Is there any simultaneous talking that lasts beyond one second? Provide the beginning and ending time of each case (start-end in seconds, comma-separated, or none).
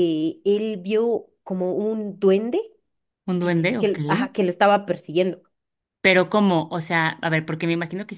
none